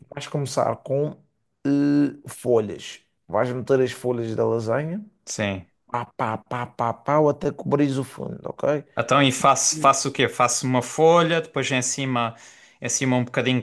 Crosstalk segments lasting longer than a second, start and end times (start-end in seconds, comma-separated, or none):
none